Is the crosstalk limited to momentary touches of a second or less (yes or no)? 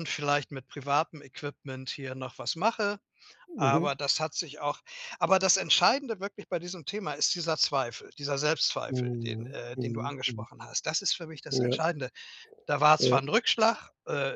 no